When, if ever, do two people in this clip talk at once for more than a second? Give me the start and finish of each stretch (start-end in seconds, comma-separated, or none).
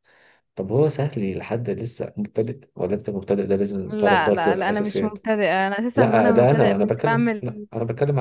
3.9-5.2, 6.0-7.7